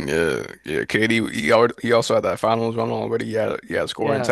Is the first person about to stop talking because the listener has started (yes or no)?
yes